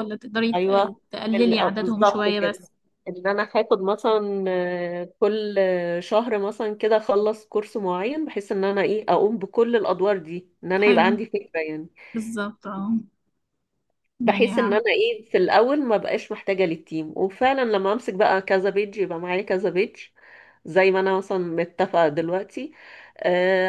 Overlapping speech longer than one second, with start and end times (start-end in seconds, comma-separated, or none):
0.6-2.7